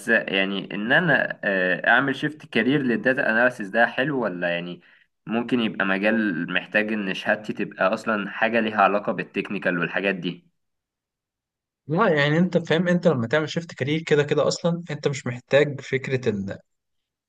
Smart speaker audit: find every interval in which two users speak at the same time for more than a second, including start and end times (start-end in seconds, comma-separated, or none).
none